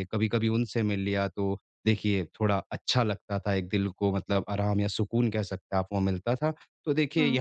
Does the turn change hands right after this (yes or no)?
no